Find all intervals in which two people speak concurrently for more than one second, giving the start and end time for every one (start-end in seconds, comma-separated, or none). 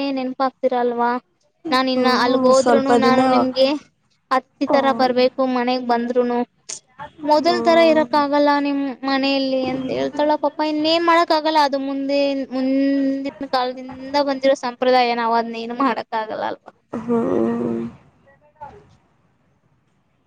2.0-3.7